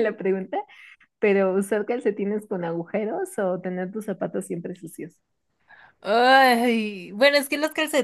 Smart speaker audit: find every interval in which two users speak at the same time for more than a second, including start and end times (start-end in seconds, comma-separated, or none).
none